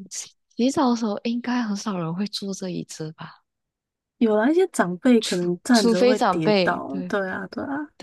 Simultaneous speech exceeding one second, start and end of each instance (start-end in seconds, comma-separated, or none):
5.2-7.1